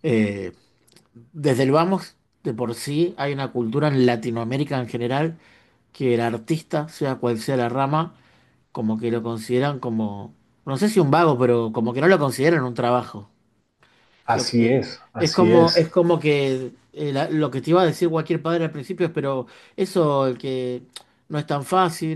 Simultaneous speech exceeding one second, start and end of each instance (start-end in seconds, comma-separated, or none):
14.3-15.8